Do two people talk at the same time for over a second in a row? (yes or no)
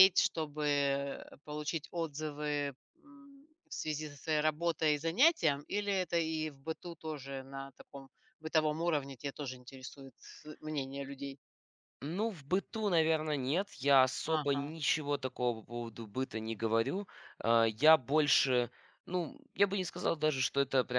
no